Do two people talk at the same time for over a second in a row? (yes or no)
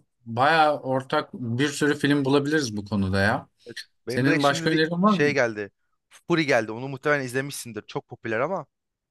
yes